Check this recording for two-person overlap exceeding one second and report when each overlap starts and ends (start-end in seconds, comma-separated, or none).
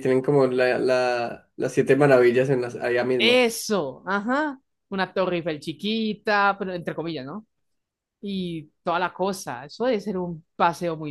none